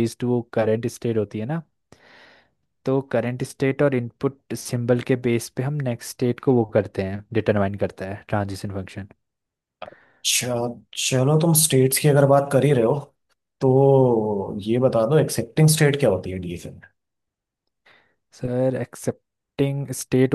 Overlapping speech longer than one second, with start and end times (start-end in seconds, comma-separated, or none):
none